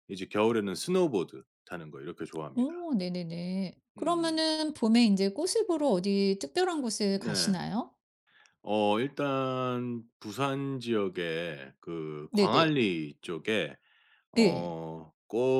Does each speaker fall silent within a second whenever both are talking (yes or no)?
yes